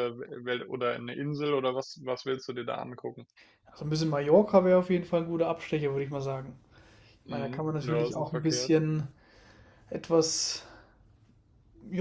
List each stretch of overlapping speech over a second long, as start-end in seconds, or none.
7.3-8.7